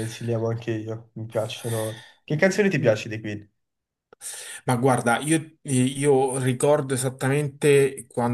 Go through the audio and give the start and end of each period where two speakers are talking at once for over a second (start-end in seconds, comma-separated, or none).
none